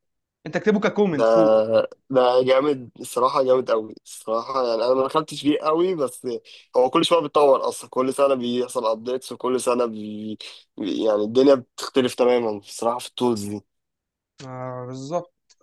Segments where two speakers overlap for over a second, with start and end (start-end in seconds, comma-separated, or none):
none